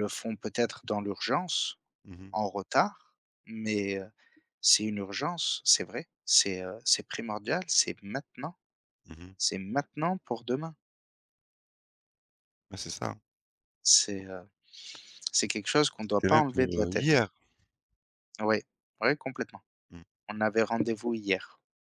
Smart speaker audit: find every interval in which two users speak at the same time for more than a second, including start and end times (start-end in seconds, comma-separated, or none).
16.0-17.2